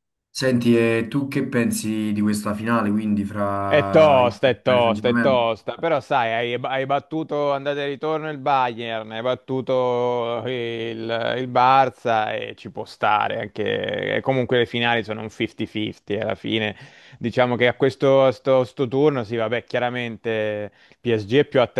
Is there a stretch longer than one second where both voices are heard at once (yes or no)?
yes